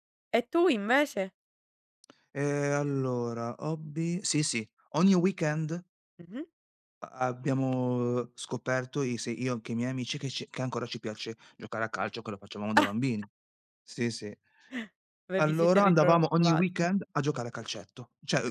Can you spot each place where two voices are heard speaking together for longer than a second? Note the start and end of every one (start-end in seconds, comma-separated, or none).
15.4-16.7